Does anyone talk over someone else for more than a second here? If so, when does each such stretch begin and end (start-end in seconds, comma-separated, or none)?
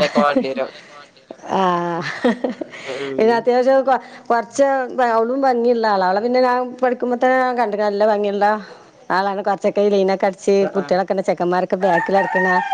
none